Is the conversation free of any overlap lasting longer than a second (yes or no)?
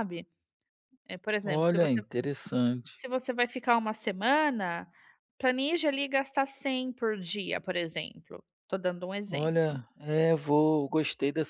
yes